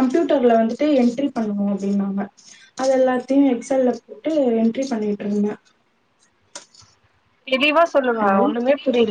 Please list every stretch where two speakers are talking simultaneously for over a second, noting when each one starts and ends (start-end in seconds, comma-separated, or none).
none